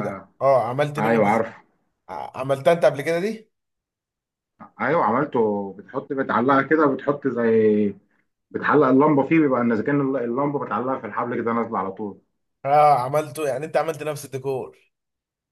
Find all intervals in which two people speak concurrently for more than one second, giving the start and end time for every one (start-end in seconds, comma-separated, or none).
none